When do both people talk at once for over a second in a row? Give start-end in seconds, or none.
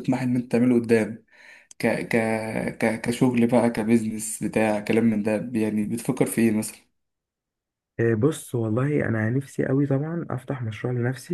none